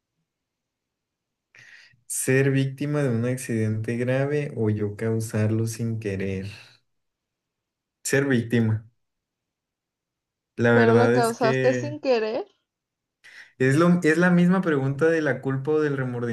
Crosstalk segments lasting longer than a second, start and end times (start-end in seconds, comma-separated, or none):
10.7-12.0